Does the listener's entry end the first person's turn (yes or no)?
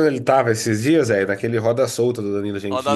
yes